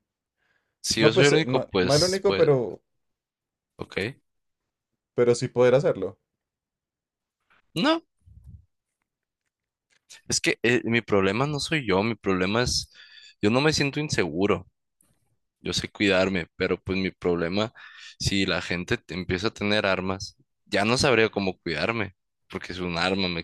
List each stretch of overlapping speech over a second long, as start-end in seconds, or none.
0.9-2.4